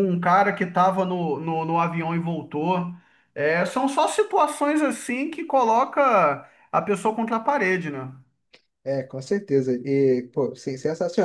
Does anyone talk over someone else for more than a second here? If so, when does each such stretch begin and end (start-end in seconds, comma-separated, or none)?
none